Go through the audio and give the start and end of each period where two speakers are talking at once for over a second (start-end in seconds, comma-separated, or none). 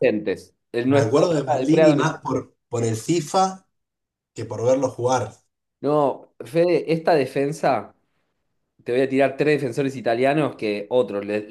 0.8-2.2